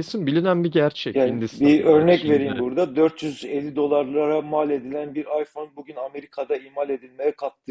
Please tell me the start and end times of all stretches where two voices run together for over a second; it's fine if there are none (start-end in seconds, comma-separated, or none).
1.1-2.6